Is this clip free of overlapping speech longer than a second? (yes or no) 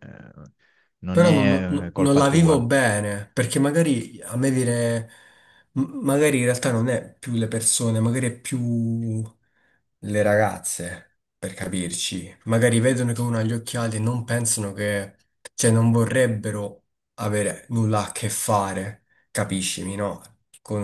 no